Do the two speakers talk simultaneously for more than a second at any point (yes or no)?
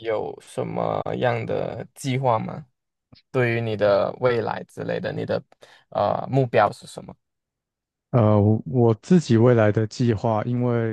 no